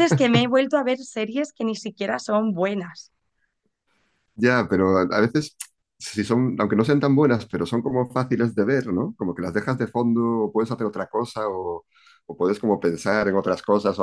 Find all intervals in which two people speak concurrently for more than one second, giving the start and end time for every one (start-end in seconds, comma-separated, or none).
none